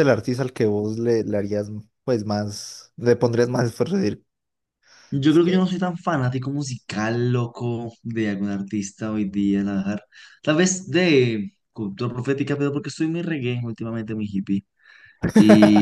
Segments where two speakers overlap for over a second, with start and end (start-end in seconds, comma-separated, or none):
none